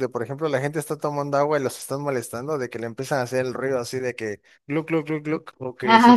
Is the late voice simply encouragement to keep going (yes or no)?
yes